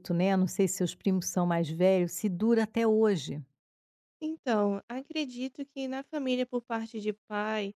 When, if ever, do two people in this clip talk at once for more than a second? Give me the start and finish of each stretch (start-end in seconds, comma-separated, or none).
none